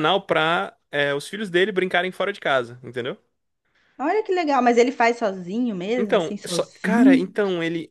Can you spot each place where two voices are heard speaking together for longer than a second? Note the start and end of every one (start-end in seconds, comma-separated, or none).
6.0-7.3